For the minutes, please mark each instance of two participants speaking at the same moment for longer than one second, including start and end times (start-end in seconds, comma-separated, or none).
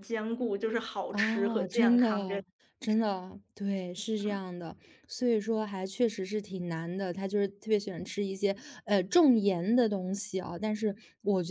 1.1-2.4